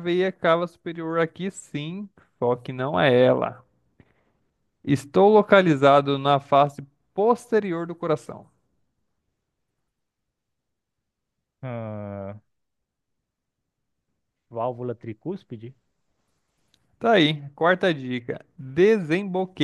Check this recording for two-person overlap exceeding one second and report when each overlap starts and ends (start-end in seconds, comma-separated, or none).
none